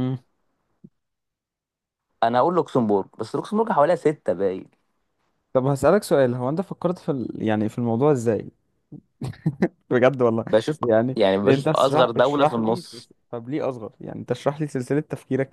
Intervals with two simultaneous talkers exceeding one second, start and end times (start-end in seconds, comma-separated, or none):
11.2-13.1